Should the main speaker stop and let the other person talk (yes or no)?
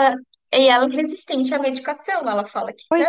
no